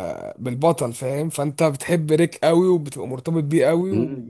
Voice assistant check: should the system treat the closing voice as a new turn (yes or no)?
yes